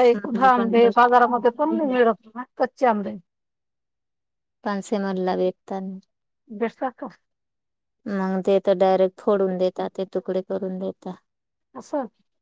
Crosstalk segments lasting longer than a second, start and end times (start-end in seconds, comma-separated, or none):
0.6-1.9